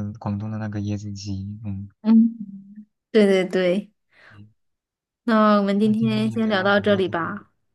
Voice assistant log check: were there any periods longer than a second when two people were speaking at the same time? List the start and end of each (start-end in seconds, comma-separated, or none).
5.8-7.2